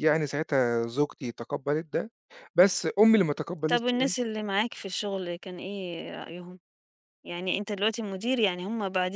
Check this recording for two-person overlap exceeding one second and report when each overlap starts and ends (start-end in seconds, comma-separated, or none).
none